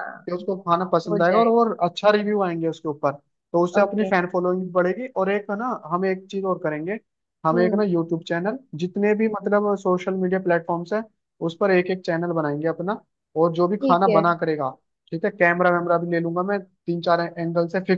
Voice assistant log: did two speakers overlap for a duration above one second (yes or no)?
no